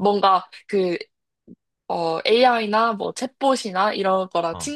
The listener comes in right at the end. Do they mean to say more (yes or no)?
no